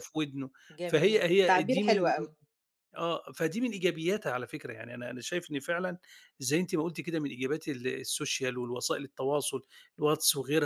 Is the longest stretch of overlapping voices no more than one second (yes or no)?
no